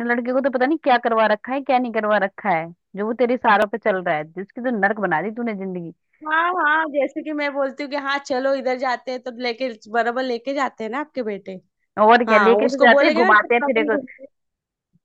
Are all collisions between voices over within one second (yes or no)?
no